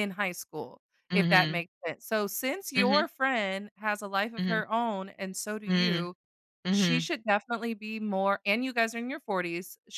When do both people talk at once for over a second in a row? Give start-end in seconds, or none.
none